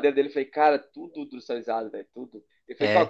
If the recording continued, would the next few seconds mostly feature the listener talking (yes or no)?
no